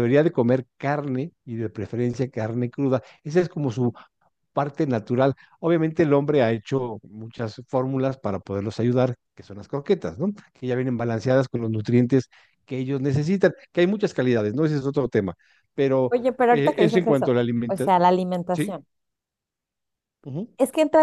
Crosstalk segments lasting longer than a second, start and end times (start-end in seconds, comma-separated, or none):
16.1-17.9